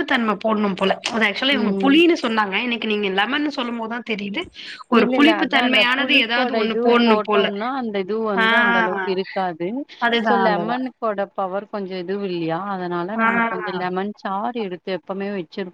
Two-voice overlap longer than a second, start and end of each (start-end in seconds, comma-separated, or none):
5.0-7.5